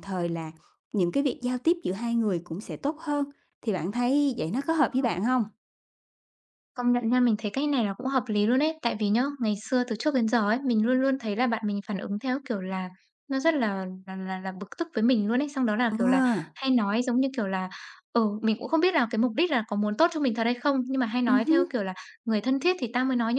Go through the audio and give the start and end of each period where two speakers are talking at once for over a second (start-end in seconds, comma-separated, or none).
none